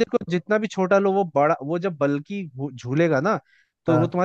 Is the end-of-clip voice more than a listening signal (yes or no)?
no